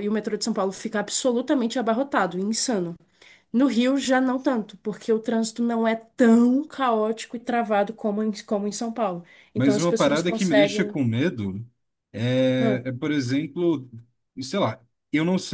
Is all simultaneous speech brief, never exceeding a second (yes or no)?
no